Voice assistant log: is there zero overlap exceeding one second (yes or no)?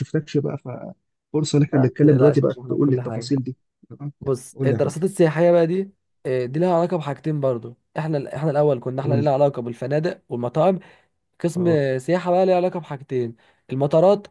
no